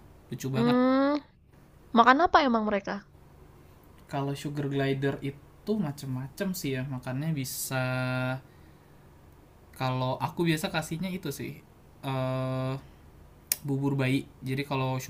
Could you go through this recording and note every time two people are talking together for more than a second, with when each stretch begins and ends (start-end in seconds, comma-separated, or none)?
none